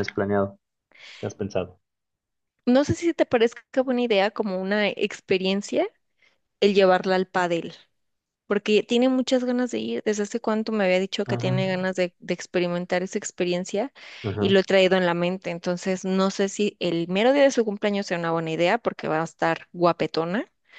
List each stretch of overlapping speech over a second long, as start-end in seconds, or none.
none